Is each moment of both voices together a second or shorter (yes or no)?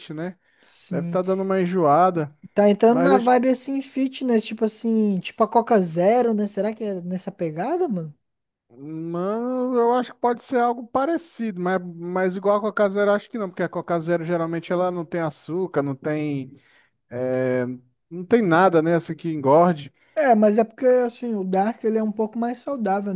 yes